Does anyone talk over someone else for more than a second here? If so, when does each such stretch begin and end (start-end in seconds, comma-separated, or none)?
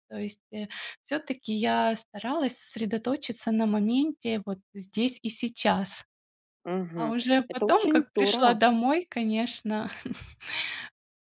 7.0-8.6